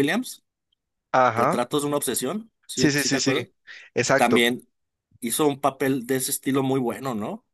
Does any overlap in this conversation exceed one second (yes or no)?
no